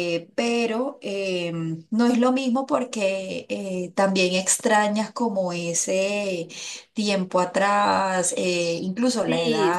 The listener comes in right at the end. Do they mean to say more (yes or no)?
yes